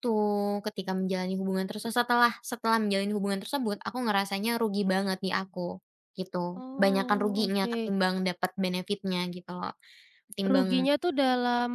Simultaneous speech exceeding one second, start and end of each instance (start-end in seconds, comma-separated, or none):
6.5-7.9